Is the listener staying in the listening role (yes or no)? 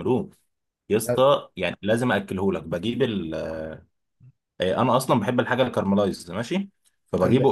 no